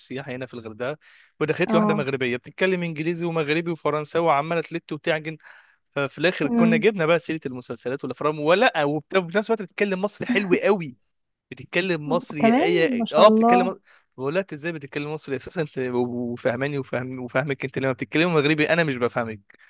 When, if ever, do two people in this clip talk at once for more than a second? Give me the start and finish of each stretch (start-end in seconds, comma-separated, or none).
12.4-13.7